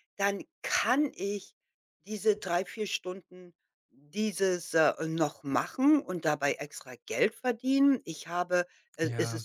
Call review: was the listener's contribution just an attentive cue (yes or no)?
yes